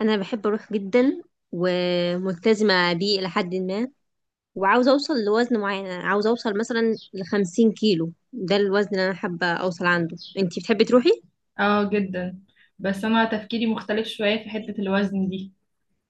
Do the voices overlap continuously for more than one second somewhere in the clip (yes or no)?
no